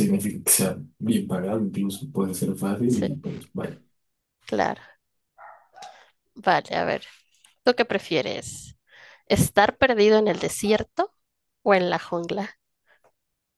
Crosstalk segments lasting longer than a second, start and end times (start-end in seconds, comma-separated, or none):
none